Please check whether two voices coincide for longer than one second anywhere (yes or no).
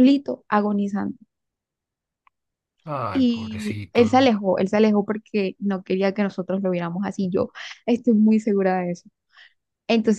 yes